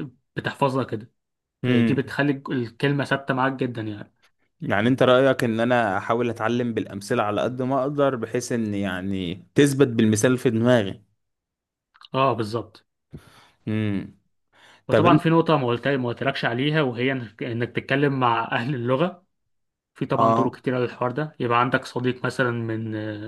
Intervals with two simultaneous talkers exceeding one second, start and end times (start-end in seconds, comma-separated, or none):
none